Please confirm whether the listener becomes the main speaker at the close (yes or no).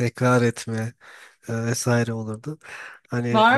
yes